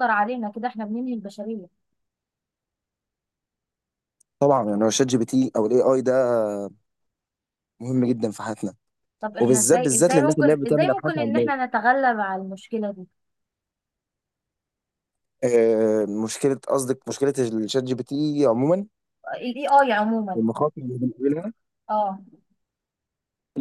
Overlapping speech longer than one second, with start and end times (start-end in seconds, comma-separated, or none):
9.4-11.5